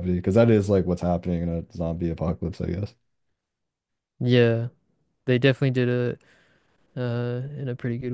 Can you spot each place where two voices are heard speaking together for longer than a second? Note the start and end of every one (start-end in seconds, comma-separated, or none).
none